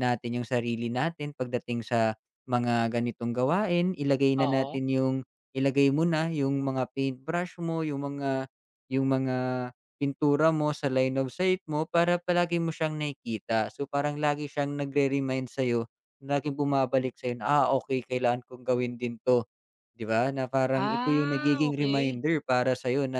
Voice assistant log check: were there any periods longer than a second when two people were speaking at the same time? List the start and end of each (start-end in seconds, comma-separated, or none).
20.7-22.2